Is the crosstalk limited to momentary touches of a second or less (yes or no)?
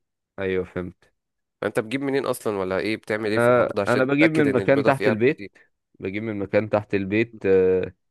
no